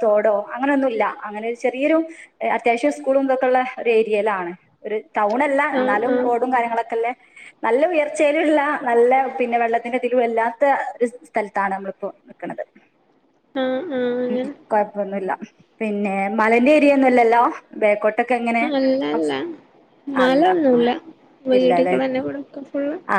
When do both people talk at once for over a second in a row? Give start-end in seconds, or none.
none